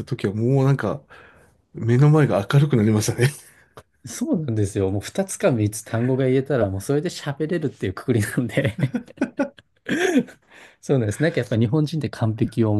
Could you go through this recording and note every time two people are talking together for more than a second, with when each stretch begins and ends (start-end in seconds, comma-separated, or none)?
none